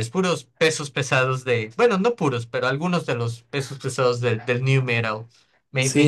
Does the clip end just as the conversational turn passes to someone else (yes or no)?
yes